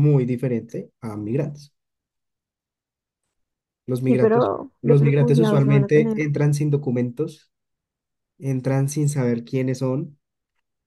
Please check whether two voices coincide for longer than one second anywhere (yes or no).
yes